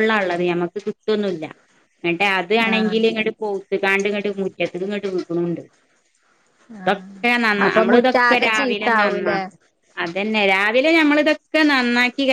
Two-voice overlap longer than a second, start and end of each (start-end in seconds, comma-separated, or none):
7.7-9.3